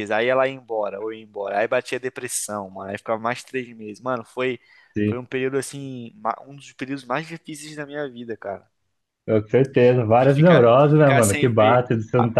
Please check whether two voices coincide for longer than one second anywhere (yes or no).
yes